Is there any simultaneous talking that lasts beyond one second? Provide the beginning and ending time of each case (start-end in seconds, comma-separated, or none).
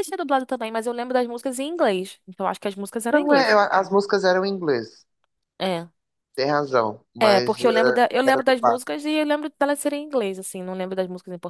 7.2-8.9